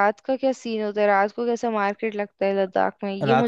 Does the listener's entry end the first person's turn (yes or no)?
yes